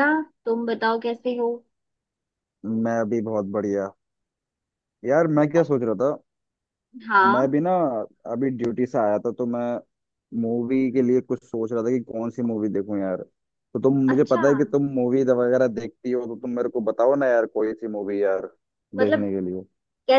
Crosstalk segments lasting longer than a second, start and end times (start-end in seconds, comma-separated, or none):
none